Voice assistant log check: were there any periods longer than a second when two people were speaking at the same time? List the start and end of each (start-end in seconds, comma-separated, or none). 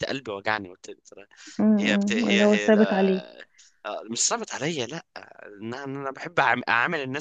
1.8-3.2